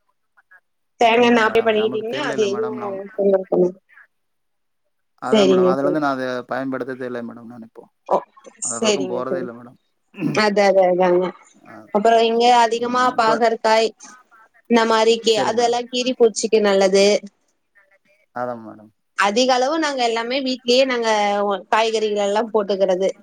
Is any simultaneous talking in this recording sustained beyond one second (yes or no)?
yes